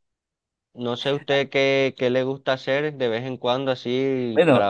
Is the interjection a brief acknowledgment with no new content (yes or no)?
no